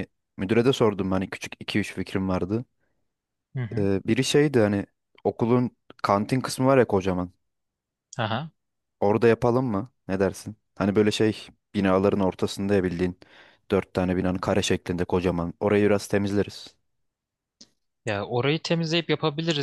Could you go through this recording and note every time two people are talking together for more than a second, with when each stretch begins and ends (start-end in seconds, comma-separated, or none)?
none